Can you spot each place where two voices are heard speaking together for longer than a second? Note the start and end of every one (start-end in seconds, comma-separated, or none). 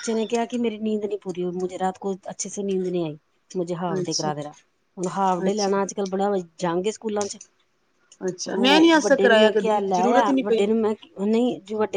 8.5-10.7